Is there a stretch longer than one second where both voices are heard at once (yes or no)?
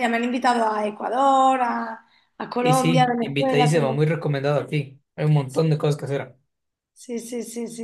yes